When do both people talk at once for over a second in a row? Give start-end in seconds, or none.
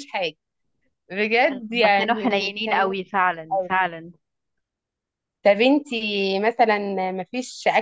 1.7-3.7